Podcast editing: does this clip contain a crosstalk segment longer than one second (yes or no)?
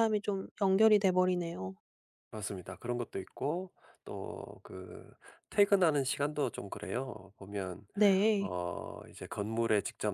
no